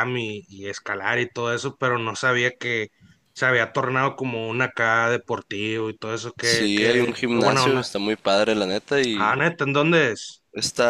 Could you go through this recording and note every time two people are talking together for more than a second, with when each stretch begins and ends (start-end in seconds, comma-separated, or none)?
6.4-7.9